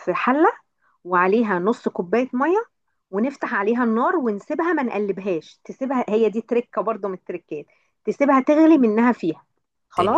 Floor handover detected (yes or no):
yes